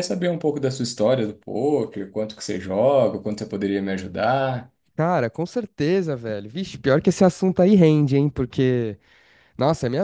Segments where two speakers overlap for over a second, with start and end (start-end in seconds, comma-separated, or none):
none